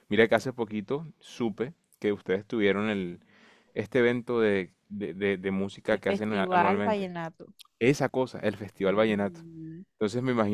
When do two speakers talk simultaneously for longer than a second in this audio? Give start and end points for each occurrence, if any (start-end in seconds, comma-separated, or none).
5.9-7.1